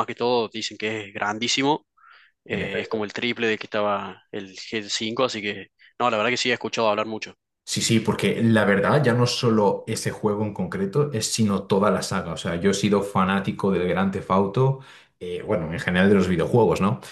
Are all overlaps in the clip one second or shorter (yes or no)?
yes